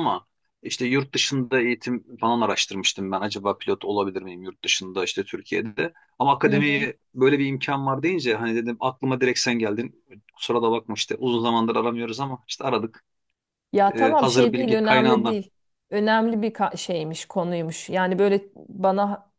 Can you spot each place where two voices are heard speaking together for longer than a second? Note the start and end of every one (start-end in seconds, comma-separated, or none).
13.9-15.4